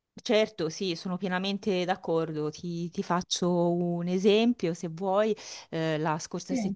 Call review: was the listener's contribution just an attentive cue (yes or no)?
yes